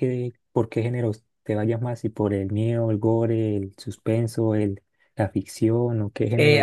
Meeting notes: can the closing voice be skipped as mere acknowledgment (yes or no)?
no